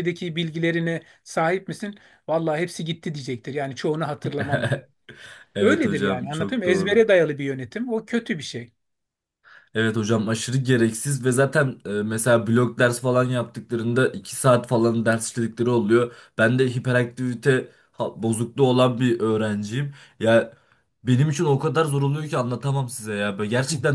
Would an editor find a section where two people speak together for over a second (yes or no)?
yes